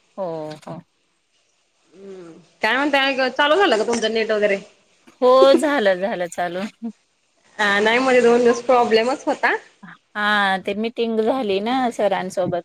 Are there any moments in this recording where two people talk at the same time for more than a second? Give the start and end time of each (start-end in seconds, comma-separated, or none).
none